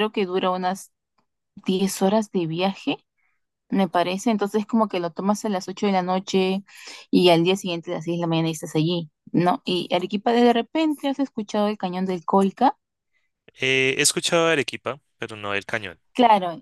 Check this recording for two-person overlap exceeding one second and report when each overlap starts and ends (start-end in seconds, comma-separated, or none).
none